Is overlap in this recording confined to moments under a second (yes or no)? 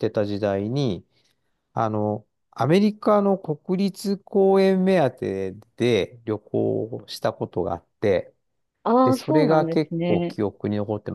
no